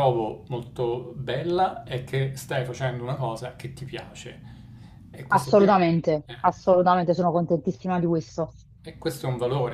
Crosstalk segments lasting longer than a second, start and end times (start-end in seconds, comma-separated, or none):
none